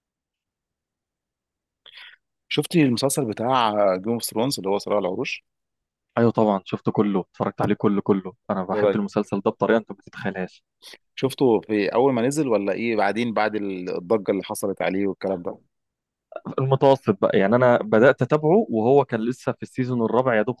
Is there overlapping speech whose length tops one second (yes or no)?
no